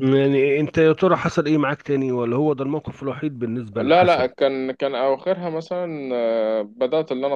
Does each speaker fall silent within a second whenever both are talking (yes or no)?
yes